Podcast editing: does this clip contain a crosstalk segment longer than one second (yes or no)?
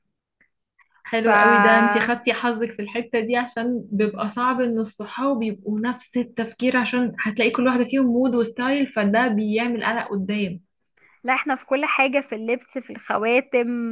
no